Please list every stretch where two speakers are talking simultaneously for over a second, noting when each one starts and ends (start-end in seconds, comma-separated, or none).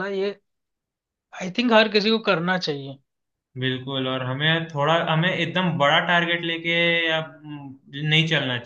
none